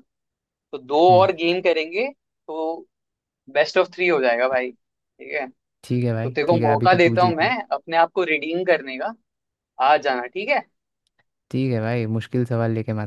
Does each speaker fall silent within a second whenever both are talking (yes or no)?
no